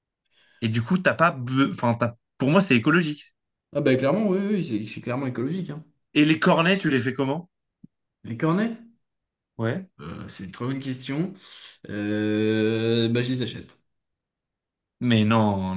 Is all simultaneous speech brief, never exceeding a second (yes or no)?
yes